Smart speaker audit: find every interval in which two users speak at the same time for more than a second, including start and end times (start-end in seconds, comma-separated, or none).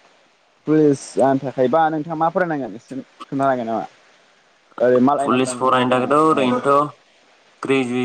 5.2-6.5